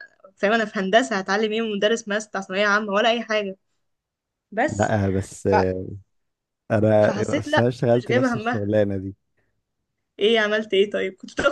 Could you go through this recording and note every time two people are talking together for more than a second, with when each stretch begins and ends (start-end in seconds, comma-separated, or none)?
7.0-8.8